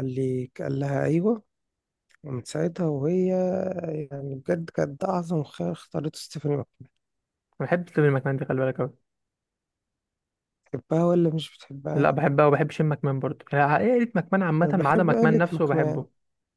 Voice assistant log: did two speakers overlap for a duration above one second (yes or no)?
yes